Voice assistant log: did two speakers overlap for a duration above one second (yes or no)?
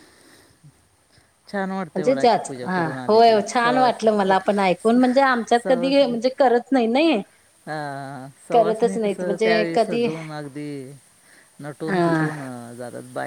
yes